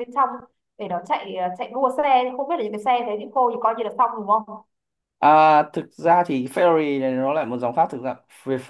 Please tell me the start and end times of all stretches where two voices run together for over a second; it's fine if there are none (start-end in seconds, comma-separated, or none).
none